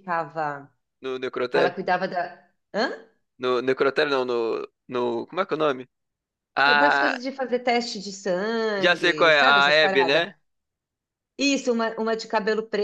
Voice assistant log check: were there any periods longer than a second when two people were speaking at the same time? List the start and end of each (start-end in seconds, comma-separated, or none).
8.8-10.2